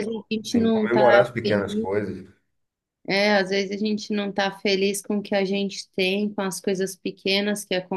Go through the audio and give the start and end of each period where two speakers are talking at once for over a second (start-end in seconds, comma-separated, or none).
0.5-1.9